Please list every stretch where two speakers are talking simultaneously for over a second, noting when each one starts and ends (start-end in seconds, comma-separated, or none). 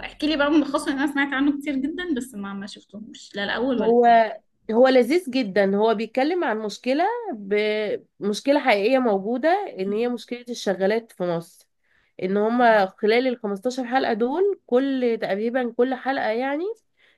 none